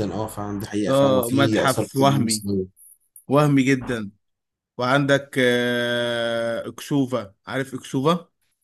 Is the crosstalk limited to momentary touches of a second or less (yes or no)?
no